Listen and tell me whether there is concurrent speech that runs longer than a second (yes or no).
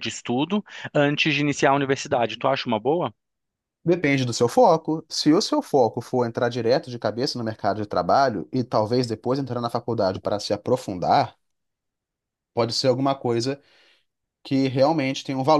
no